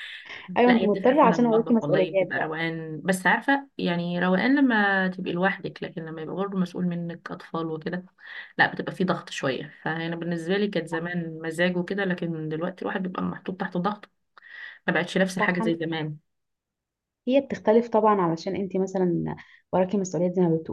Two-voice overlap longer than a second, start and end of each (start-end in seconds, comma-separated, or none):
0.7-2.5